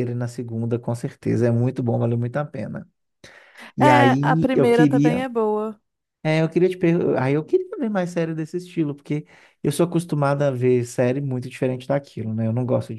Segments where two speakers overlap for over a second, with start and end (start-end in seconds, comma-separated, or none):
3.8-5.2